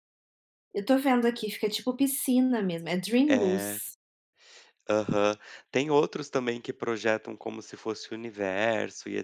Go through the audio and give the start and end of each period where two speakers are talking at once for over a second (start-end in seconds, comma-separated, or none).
none